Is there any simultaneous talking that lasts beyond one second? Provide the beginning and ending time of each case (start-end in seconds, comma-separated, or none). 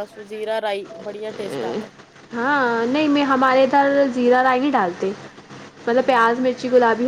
none